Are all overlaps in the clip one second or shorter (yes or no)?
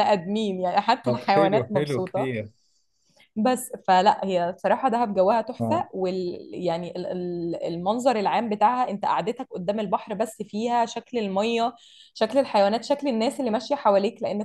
no